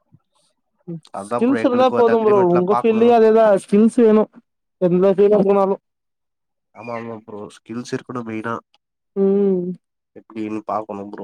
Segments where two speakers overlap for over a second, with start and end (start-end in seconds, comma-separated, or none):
1.3-3.0